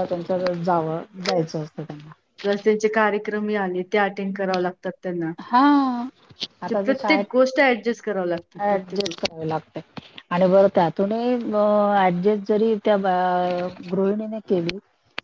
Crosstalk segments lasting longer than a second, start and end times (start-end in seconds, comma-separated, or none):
6.7-9.2